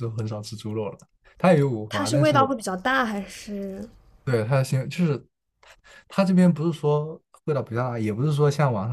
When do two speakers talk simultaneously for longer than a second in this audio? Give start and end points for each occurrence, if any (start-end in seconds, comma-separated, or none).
none